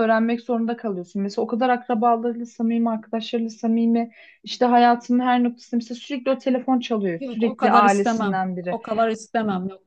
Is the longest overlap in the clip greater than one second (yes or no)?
yes